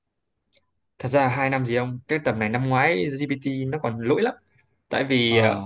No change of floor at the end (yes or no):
yes